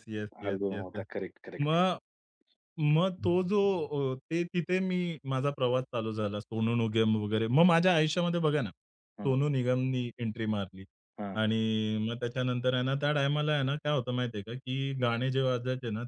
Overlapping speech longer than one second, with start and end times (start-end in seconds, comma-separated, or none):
none